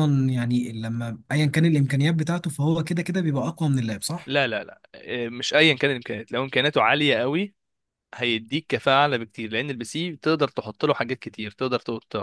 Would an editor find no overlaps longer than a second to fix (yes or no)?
yes